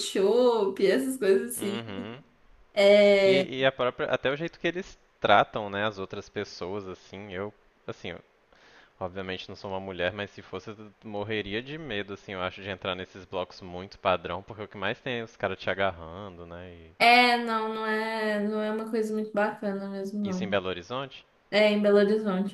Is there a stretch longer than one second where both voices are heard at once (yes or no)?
no